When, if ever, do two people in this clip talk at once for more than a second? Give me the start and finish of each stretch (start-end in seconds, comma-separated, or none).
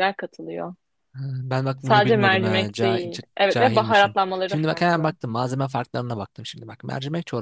1.8-5.1